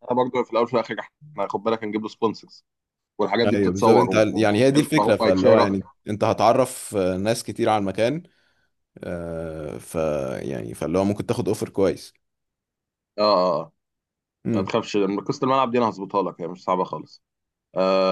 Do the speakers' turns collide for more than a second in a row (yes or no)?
yes